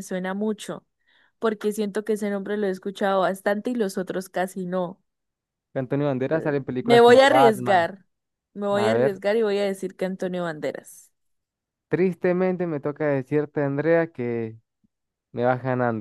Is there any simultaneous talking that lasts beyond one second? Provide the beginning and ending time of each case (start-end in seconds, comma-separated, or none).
6.2-7.9